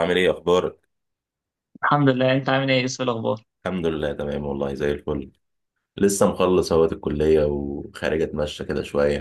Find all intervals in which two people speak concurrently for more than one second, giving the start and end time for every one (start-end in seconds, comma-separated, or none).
none